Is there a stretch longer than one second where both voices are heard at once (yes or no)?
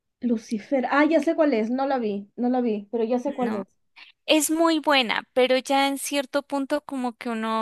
no